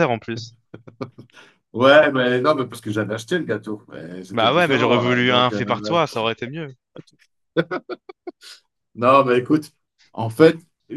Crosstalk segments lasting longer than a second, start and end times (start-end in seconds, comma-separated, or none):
4.3-5.6